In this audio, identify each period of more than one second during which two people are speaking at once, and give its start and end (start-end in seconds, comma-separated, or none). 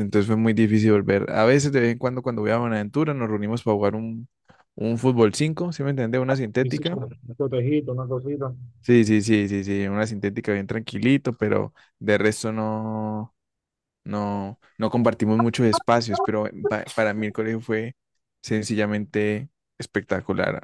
none